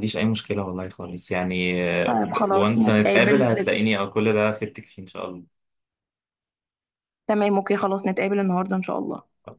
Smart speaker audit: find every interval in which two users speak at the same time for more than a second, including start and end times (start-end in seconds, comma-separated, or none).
2.5-3.8